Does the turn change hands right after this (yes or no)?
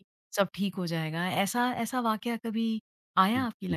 yes